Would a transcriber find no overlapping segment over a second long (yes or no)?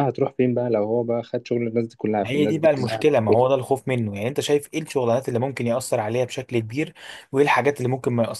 no